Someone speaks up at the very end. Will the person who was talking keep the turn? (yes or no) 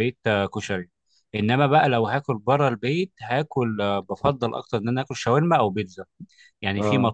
yes